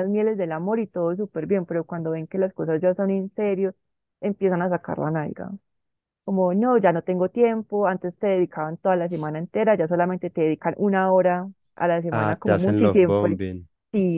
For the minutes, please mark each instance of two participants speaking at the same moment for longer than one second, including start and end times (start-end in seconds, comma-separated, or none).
12.1-13.4